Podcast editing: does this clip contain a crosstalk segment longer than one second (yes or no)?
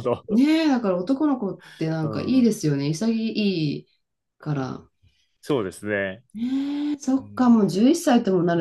no